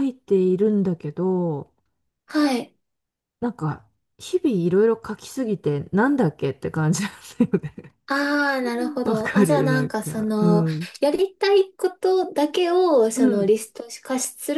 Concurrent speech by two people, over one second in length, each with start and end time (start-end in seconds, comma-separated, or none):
9.0-10.6